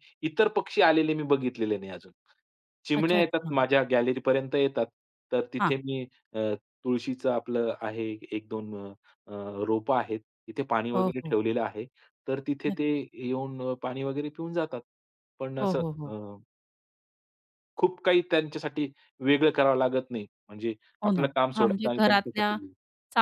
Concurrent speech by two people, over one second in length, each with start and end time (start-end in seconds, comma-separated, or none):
21.1-22.6